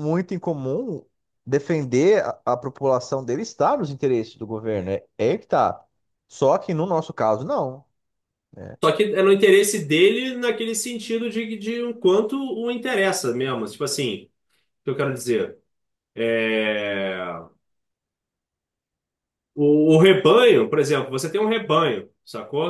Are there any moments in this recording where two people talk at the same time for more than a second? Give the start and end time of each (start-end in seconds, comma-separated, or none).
none